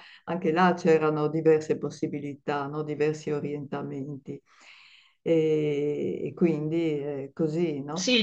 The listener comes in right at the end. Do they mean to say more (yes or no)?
yes